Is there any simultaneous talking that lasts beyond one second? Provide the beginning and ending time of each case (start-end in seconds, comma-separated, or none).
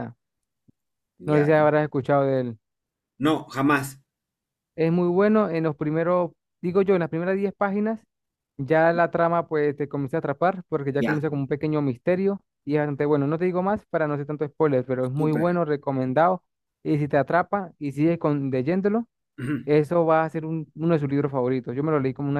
none